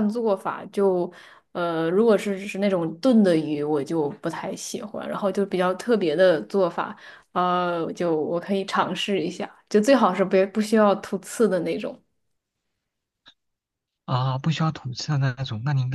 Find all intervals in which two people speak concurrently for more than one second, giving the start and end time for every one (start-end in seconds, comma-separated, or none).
none